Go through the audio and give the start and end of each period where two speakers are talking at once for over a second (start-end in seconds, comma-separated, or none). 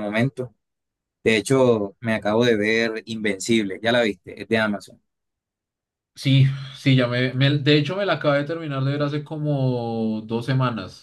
none